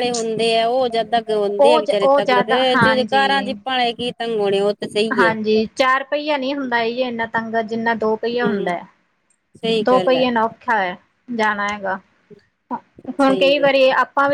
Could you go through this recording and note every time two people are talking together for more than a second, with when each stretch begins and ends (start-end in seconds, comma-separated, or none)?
1.6-3.5